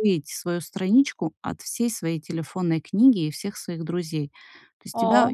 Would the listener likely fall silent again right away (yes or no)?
yes